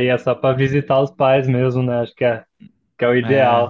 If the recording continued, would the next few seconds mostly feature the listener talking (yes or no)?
no